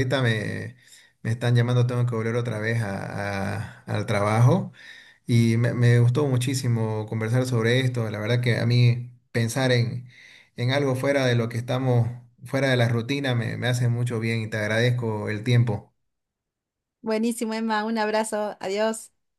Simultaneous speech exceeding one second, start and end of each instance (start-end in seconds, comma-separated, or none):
none